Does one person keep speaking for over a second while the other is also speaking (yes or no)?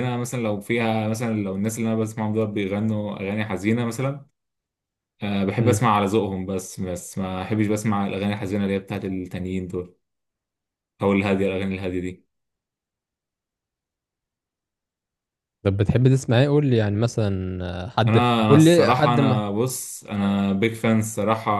yes